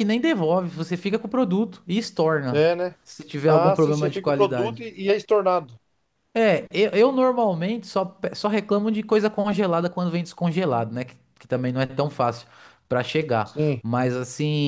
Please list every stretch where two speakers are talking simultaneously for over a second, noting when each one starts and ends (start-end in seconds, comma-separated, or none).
3.5-4.8